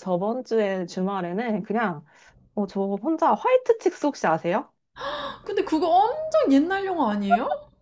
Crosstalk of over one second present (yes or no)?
no